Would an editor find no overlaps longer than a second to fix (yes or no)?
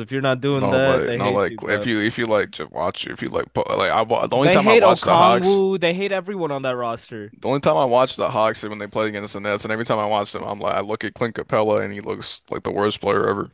no